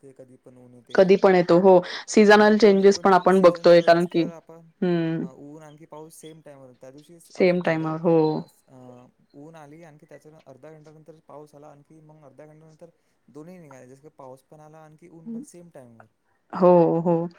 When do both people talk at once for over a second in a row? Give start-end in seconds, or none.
2.3-4.2